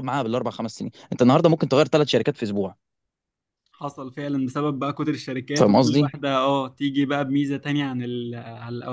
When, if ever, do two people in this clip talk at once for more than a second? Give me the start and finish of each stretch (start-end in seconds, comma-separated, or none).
none